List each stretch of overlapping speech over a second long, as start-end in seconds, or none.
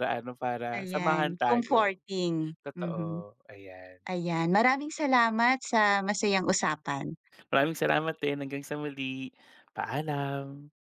0.7-2.0